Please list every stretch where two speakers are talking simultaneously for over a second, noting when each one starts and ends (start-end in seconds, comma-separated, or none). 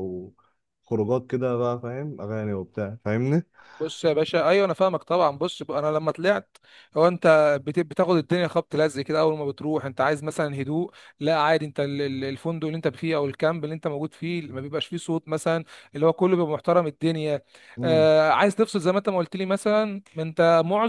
none